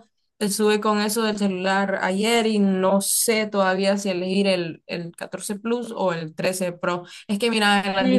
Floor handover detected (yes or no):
yes